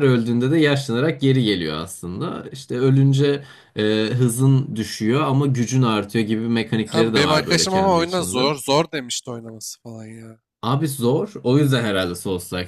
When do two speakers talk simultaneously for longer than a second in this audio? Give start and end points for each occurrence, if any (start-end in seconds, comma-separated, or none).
6.9-8.5